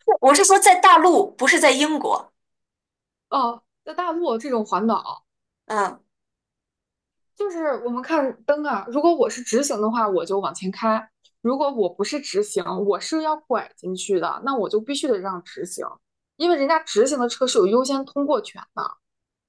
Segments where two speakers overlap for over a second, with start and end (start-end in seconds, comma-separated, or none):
none